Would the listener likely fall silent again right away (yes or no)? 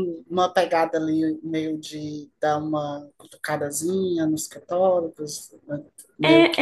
no